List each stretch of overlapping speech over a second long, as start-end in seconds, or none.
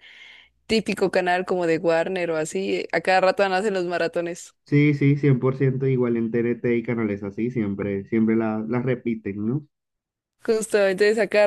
none